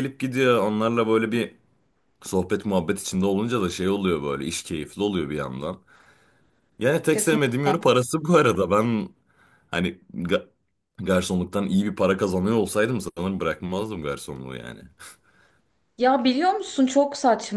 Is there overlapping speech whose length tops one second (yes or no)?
no